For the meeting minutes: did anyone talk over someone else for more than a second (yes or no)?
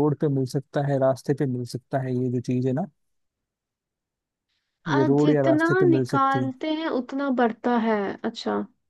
yes